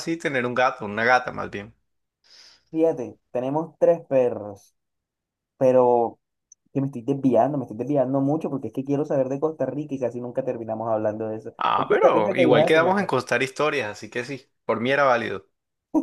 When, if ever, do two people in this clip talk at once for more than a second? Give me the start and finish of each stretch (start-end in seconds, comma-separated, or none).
11.6-13.1